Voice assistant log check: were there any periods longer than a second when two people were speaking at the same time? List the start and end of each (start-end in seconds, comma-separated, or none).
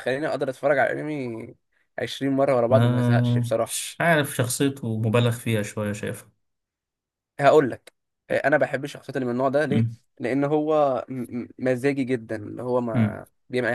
2.7-3.9